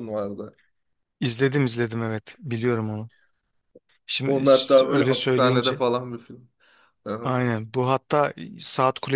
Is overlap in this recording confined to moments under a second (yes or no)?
no